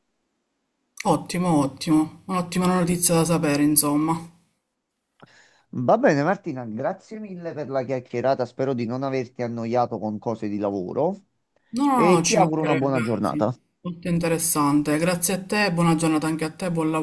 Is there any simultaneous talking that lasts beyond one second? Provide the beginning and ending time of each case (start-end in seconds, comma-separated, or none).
11.9-13.6